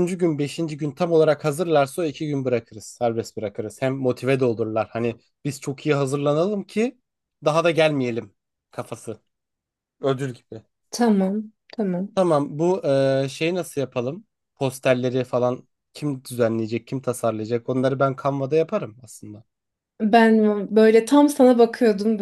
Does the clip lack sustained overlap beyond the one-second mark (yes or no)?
yes